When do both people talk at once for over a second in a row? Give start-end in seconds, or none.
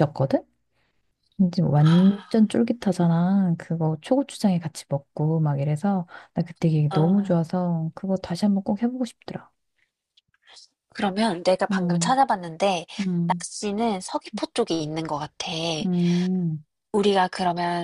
none